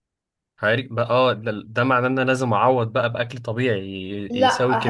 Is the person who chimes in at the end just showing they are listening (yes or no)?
no